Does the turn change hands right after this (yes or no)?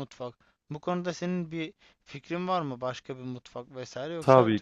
yes